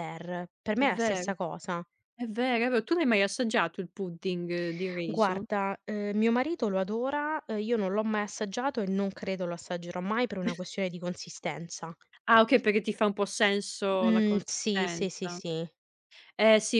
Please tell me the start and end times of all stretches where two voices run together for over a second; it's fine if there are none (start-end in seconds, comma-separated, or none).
14.0-15.4